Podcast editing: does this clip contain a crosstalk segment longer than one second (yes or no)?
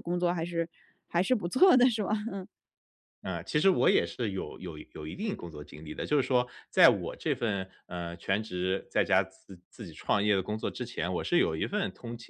no